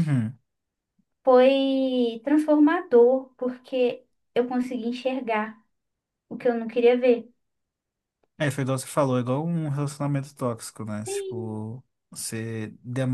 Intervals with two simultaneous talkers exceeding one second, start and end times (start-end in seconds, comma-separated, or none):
none